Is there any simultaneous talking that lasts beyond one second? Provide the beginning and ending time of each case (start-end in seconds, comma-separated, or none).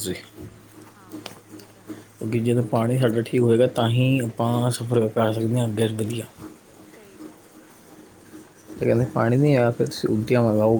none